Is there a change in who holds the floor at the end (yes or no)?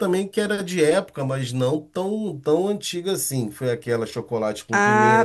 yes